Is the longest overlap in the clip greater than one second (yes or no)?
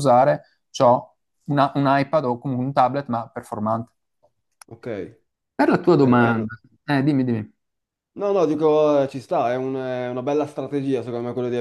no